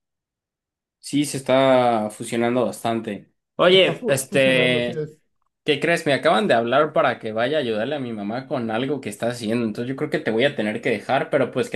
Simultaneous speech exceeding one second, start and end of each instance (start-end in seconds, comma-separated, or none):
3.7-5.1